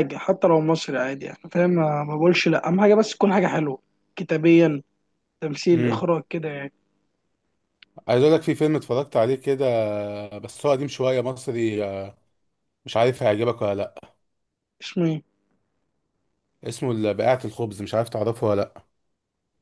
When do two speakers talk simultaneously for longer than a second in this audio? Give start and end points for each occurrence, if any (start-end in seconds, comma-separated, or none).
none